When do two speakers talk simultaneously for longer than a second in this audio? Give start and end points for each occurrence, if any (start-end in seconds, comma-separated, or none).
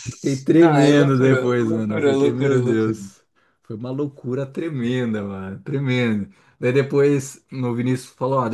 0.5-3.0